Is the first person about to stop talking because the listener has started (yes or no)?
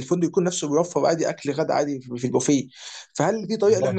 no